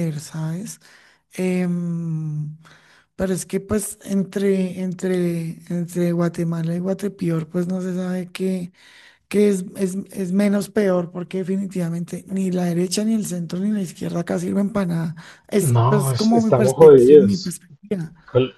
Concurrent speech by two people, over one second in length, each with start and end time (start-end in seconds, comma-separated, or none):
15.6-17.6